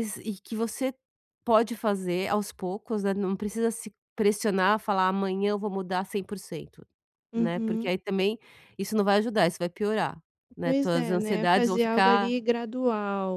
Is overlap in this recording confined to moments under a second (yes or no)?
no